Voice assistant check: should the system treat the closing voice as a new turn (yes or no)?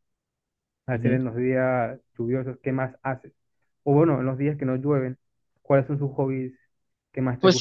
yes